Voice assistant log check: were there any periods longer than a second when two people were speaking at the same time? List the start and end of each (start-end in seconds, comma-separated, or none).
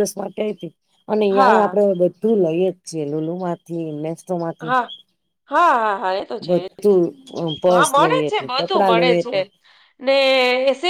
7.7-9.4